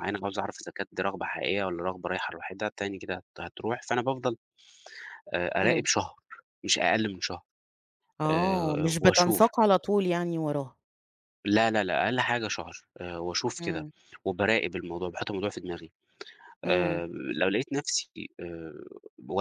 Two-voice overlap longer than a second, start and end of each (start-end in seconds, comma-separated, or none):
8.3-9.5